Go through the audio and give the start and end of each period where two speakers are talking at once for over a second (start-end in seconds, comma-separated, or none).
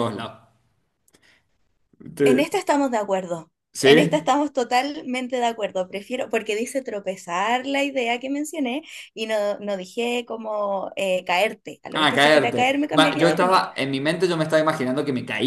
11.9-13.7